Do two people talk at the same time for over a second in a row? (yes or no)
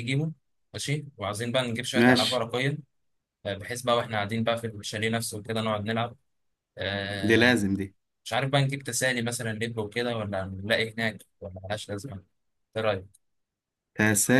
no